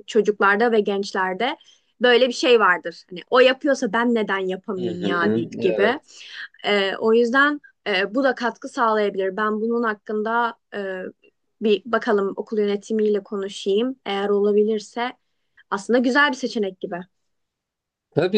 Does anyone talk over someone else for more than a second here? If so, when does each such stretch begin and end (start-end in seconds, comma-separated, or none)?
4.7-6.0